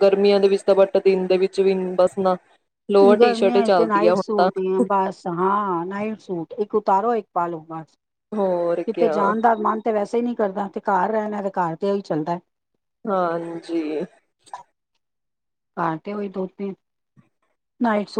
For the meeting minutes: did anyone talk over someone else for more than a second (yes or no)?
yes